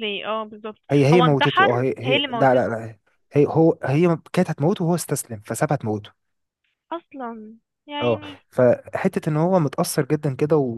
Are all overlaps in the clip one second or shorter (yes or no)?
no